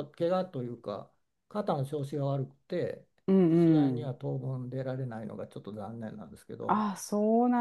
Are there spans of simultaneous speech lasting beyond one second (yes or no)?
no